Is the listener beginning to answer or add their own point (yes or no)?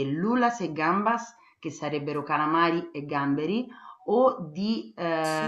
no